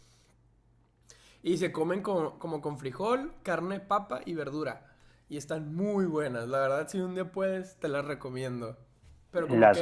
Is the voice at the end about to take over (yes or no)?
yes